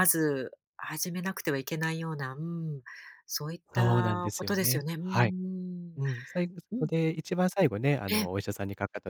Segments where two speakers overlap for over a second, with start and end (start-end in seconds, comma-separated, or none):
3.8-5.3